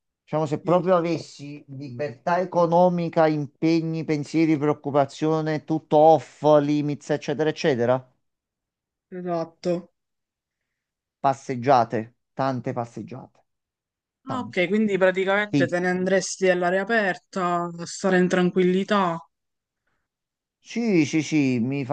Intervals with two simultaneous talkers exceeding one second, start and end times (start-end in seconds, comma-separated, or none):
none